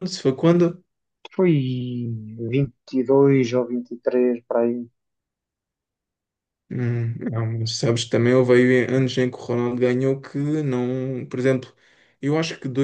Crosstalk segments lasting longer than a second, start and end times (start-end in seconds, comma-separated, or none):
none